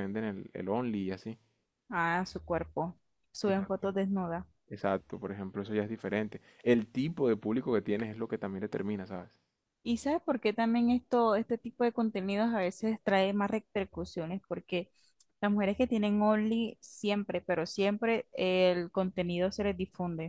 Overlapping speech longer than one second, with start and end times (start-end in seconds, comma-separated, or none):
none